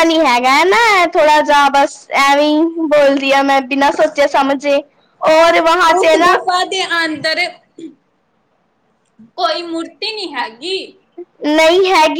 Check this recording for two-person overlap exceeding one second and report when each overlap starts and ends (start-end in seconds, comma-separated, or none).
none